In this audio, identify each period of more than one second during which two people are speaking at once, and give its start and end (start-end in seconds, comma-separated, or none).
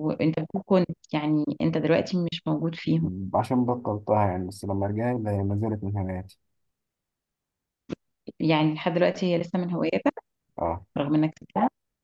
none